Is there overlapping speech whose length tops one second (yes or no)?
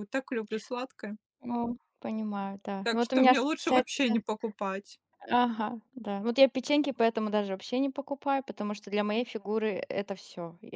yes